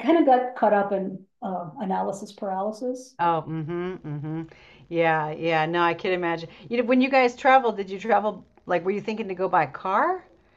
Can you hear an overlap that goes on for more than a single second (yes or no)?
no